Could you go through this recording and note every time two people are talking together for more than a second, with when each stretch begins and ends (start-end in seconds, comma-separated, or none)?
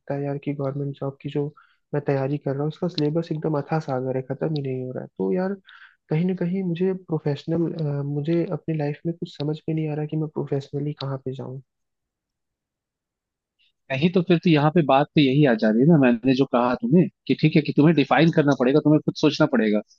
none